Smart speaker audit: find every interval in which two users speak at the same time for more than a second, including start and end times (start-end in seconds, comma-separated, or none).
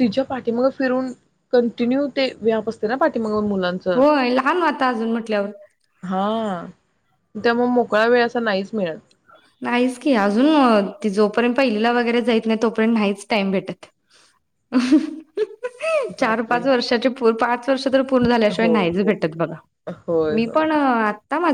none